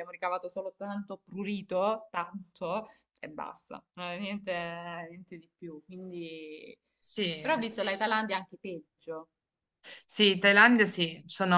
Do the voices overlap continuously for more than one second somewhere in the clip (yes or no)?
no